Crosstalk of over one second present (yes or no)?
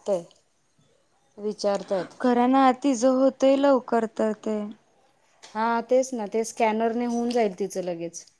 no